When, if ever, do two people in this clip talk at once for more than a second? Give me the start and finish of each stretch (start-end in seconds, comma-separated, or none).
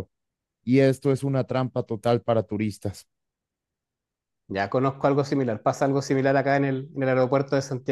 none